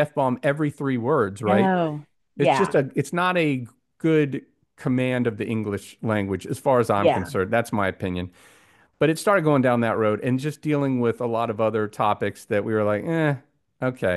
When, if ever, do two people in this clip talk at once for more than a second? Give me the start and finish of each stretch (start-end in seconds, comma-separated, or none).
none